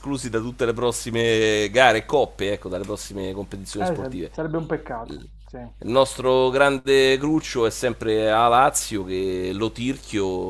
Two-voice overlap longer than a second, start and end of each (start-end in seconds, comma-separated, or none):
none